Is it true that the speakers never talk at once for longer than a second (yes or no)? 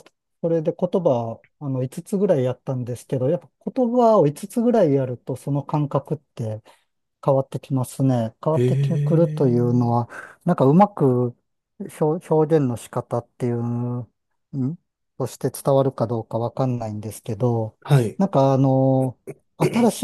no